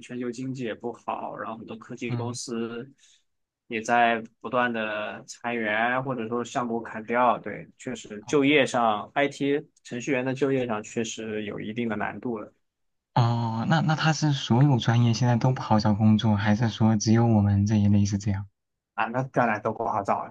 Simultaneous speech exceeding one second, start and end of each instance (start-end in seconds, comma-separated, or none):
none